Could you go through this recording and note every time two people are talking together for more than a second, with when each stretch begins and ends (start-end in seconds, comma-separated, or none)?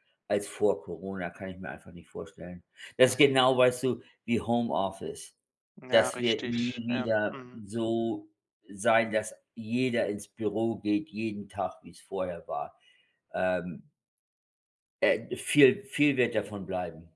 5.9-7.6